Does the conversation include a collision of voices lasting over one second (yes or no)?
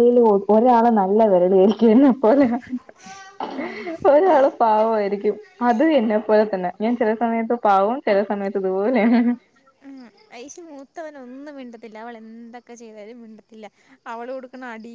no